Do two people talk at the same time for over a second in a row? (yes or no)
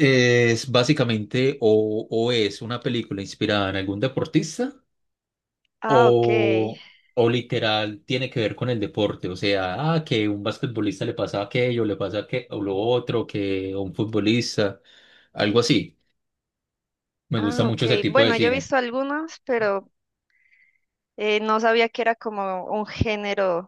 yes